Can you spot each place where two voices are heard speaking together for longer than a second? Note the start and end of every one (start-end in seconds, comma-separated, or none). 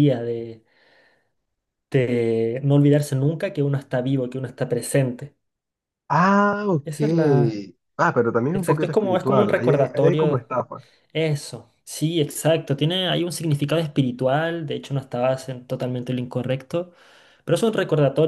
8.5-10.5